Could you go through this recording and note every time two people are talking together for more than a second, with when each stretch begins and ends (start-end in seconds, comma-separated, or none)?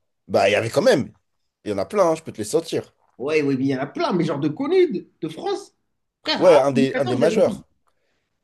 6.4-7.6